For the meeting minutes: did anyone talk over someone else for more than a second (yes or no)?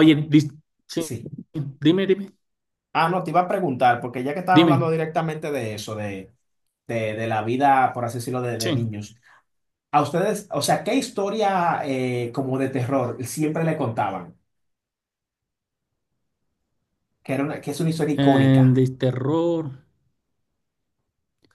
no